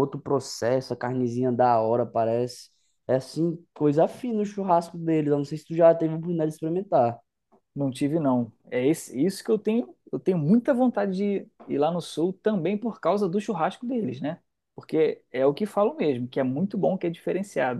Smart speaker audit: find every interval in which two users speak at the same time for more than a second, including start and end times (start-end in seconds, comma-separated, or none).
none